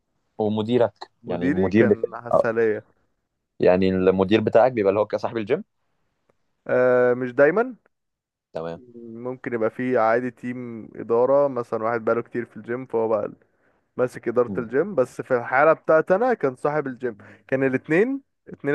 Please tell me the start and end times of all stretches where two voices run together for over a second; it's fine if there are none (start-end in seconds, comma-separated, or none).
1.2-2.5